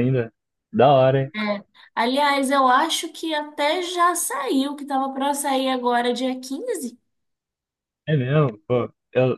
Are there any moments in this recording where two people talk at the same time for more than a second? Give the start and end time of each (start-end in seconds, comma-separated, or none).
none